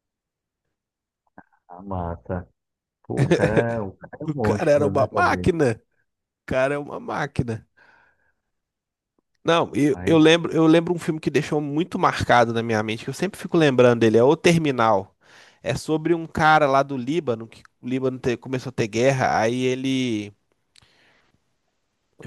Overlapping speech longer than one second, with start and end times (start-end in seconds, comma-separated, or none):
4.3-5.5